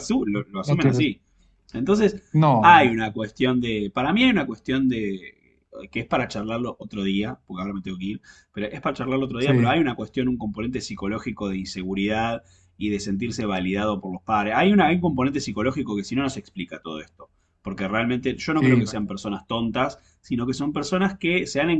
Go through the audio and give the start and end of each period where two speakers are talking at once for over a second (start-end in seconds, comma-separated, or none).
none